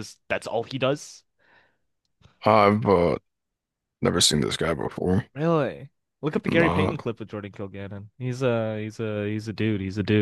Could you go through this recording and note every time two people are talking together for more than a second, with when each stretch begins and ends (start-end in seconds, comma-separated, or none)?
none